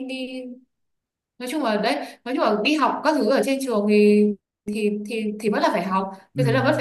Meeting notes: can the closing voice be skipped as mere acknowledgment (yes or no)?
yes